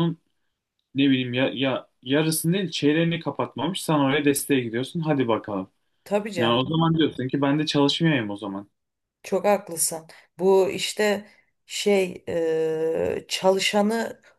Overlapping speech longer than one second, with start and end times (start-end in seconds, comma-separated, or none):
none